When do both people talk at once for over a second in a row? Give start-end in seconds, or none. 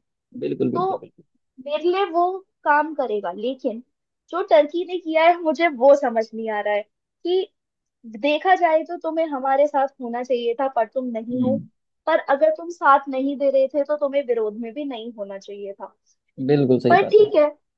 none